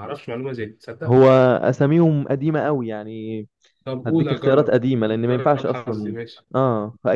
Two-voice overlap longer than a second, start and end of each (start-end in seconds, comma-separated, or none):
4.0-6.1